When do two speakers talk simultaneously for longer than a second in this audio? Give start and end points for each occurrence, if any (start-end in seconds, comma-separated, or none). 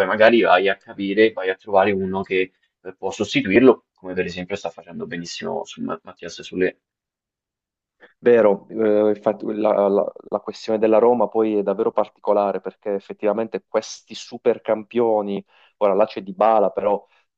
none